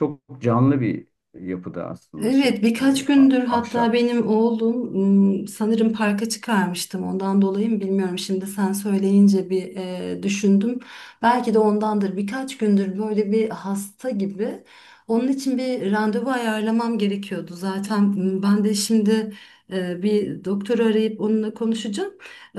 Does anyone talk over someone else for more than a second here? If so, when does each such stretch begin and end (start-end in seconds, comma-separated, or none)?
2.2-4.0